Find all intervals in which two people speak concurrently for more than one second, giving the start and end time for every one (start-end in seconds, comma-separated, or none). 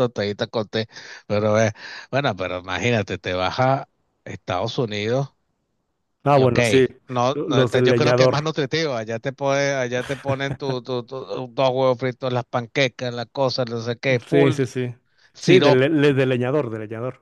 7.3-8.5